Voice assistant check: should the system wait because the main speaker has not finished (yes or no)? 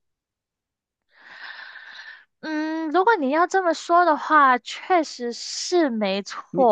no